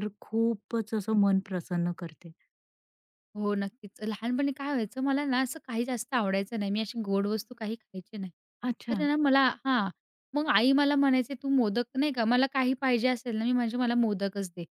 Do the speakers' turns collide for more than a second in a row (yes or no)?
no